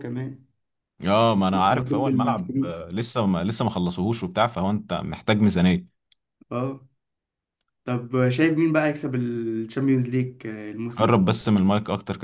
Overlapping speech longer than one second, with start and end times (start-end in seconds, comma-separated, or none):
1.5-2.9